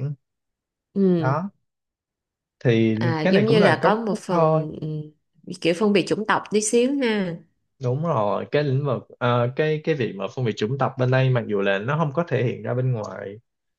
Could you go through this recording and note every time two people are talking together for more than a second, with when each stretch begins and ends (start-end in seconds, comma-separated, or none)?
2.9-4.7